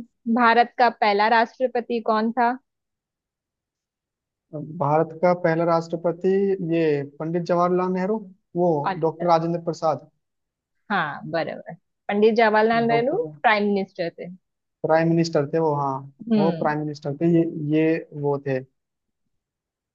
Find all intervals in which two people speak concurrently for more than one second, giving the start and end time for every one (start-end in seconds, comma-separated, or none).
none